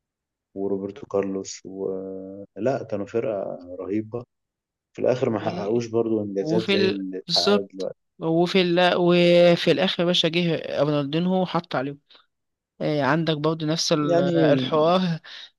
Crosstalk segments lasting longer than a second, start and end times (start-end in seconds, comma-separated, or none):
6.4-8.0